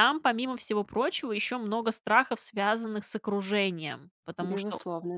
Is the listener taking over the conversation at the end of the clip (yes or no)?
no